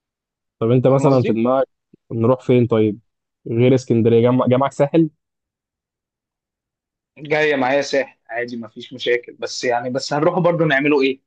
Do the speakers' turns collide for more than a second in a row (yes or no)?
no